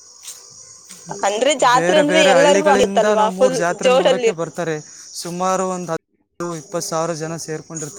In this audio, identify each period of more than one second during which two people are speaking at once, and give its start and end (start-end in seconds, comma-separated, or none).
1.8-4.3